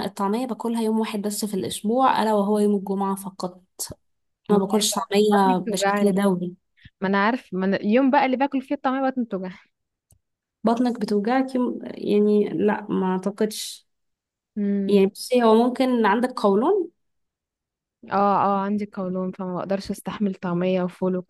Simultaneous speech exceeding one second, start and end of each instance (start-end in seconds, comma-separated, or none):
4.5-6.2